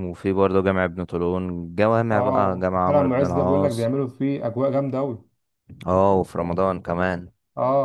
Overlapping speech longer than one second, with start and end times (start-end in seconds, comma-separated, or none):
2.1-3.9